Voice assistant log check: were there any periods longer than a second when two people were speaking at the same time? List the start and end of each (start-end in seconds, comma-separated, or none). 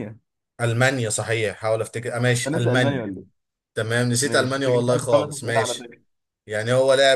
4.2-5.9